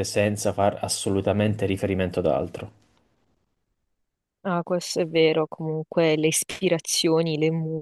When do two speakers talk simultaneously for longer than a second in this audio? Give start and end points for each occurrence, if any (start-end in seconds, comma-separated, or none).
none